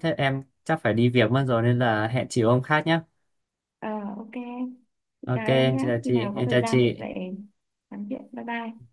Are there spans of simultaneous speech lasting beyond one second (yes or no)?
yes